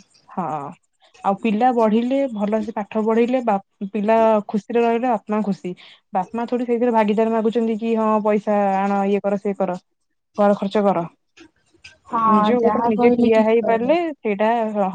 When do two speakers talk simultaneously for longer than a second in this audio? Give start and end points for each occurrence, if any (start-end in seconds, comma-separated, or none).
12.3-13.9